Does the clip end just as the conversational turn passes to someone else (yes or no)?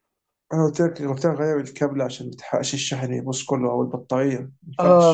yes